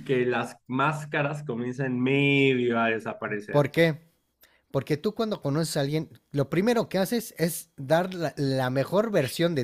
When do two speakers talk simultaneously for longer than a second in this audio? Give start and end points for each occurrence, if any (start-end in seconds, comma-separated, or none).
none